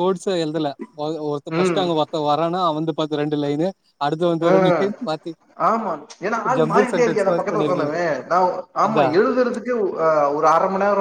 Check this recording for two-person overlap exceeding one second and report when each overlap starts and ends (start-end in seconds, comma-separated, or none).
6.6-7.9